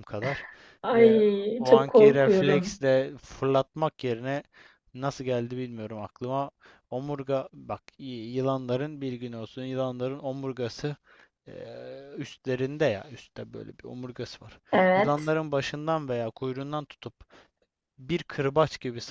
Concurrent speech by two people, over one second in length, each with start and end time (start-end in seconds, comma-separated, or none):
0.9-2.8